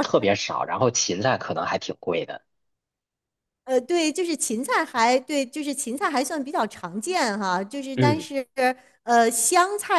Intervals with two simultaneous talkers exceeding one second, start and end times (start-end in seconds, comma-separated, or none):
none